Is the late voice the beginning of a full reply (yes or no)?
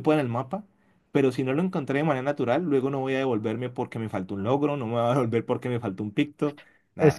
yes